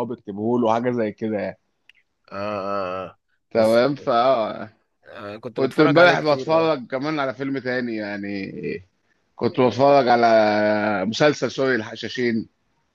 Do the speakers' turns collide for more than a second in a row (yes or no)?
yes